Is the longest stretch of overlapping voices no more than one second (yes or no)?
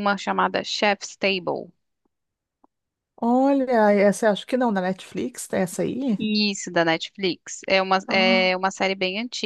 yes